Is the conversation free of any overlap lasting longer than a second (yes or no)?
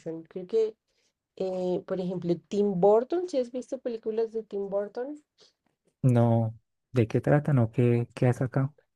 yes